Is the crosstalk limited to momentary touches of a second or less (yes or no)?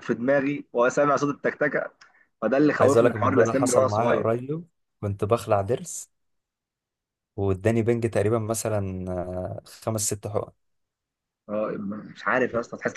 no